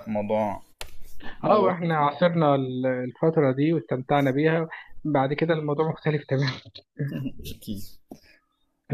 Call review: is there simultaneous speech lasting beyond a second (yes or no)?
no